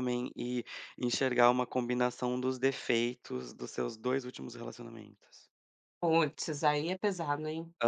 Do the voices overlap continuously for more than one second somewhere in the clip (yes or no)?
no